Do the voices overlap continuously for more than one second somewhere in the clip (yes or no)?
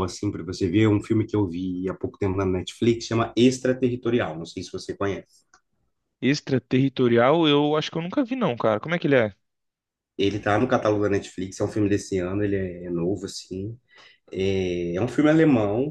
no